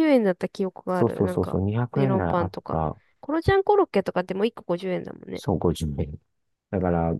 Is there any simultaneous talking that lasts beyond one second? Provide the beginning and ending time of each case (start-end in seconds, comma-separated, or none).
0.9-2.8